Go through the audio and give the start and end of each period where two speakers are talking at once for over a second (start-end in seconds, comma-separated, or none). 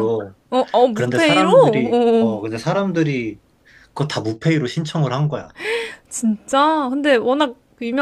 0.9-2.4